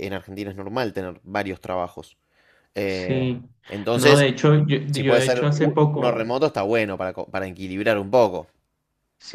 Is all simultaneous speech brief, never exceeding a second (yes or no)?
no